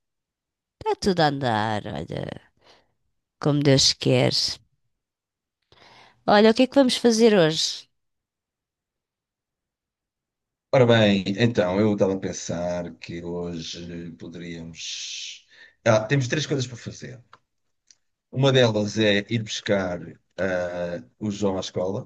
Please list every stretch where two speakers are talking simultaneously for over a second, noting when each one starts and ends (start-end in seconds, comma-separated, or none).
none